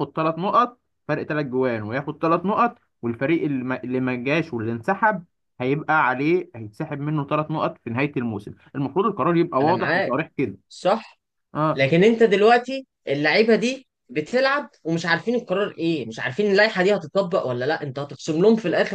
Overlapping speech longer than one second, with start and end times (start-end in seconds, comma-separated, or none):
none